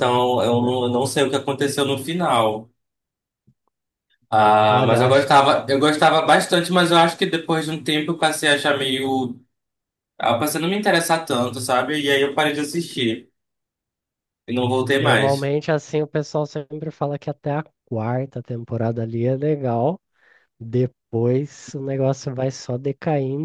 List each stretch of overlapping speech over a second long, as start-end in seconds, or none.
none